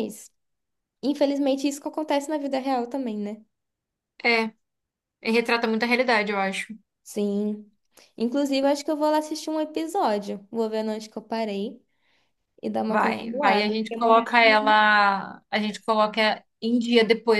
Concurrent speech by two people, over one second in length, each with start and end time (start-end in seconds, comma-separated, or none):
12.9-14.6